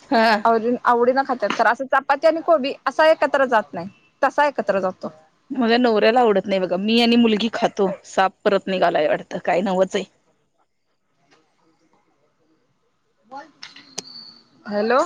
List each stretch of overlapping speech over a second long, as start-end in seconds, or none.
none